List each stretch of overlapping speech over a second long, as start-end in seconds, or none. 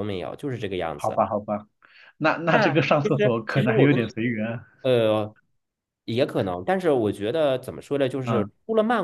2.5-4.0